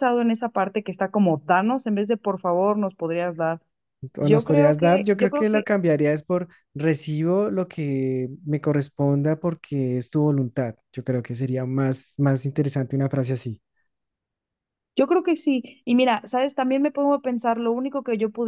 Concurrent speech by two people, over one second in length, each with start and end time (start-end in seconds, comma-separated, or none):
4.2-5.7